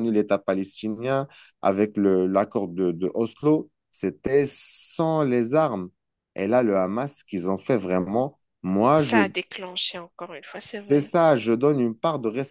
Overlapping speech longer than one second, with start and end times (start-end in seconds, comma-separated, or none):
none